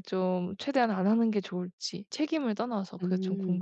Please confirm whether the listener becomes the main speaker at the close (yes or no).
yes